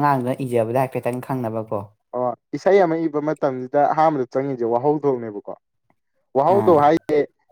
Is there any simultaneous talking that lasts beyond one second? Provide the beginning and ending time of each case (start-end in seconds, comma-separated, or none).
none